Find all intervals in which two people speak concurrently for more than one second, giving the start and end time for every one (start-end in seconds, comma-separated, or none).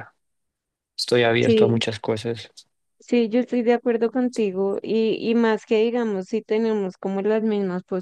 none